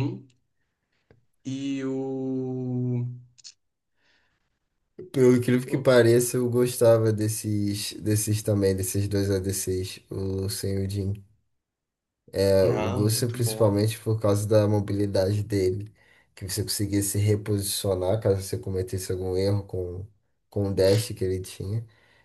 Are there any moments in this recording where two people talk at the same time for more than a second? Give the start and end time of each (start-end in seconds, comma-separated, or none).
12.6-13.8